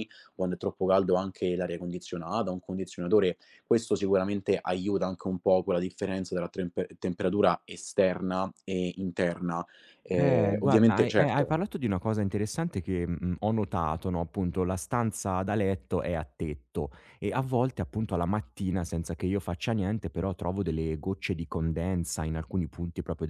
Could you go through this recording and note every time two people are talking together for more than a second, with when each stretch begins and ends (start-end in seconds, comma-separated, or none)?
10.2-11.6